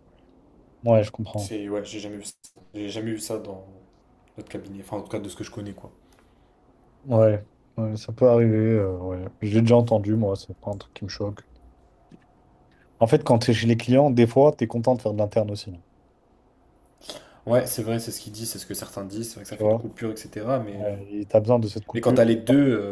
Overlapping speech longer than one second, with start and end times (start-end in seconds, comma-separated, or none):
none